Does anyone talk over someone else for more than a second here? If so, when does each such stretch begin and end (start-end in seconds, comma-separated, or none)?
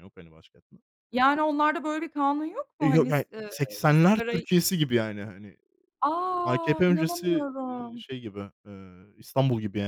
2.8-4.5, 6.4-8.0